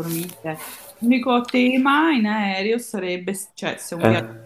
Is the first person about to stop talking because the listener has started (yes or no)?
no